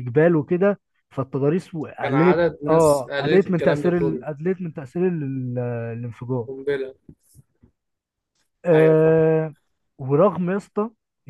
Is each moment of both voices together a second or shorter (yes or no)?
no